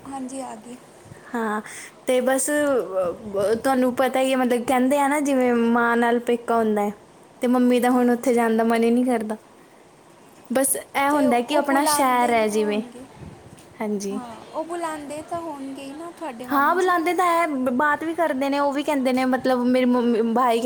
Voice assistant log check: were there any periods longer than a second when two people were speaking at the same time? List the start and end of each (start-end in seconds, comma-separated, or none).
11.1-12.8